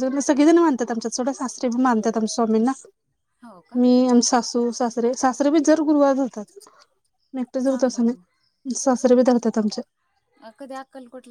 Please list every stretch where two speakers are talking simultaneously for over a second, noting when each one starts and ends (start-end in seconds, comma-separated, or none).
none